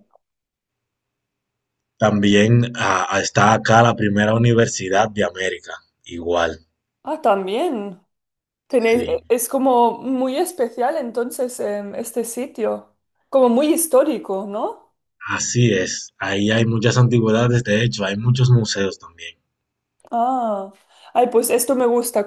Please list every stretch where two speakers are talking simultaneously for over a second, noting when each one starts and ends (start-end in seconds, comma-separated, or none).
none